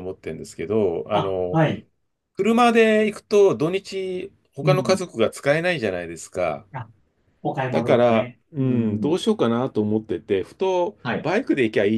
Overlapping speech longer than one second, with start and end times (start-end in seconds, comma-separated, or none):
7.7-9.2